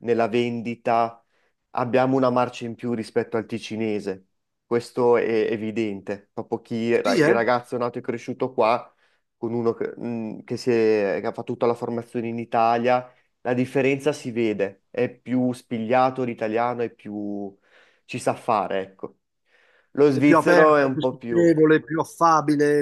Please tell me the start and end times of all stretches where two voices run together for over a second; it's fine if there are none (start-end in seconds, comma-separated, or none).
20.1-21.6